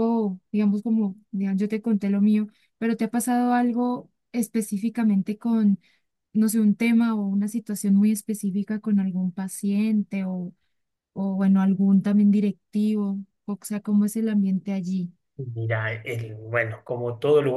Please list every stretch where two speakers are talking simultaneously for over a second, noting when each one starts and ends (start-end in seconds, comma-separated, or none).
none